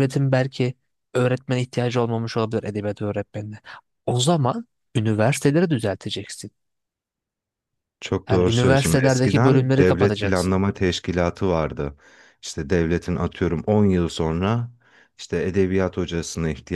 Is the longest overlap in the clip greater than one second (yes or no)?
yes